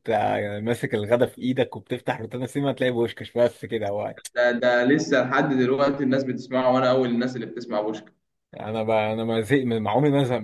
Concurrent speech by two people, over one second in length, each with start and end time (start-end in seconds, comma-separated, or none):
none